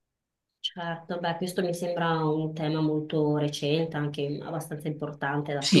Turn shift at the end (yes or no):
yes